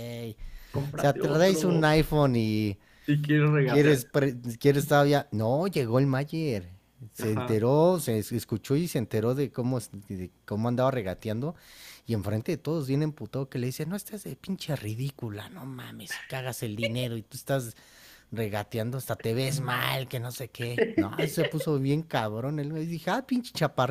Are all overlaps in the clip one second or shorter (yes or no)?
no